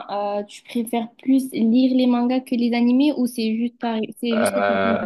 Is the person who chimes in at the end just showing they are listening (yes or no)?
no